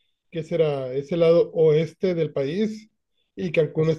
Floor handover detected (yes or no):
no